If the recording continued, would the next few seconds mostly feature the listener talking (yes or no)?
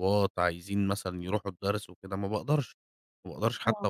no